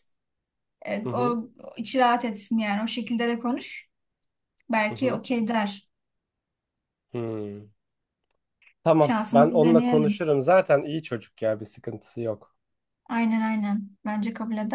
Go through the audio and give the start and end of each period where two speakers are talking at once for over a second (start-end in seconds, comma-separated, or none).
9.0-10.2